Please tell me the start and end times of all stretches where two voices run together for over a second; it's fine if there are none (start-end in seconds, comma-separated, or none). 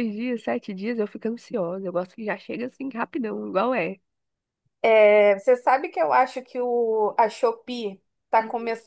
none